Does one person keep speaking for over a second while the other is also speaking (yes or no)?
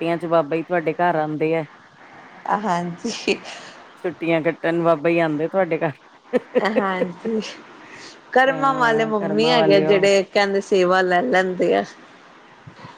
yes